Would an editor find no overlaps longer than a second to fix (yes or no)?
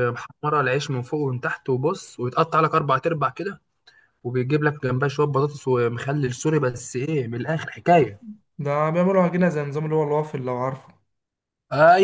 yes